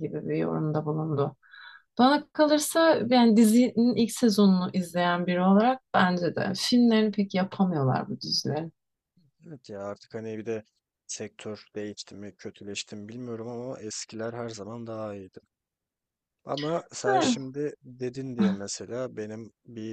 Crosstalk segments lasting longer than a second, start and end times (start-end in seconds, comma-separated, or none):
none